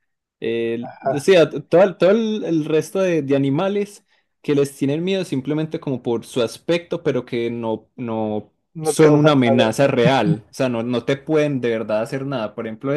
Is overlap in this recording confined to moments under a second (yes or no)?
no